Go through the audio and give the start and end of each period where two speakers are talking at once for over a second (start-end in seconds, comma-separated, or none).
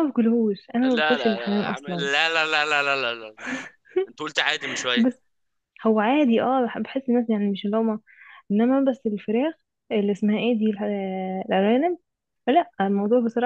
0.8-2.1